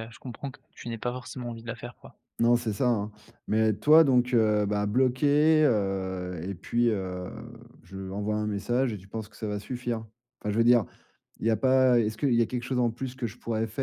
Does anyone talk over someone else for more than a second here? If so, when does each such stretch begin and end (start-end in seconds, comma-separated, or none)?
none